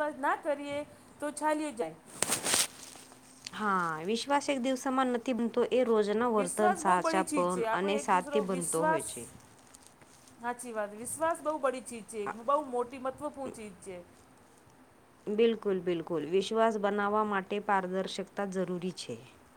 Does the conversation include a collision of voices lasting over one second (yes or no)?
yes